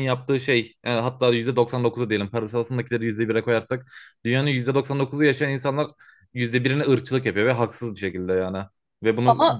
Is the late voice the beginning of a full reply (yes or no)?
no